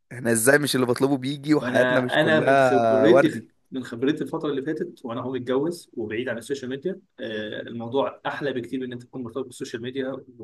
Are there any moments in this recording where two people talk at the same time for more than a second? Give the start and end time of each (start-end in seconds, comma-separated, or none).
1.6-3.5